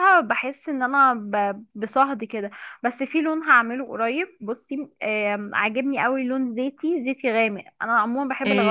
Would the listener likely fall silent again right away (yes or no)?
no